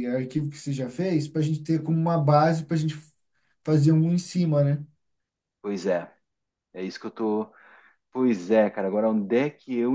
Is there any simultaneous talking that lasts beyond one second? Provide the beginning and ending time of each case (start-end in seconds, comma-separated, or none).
none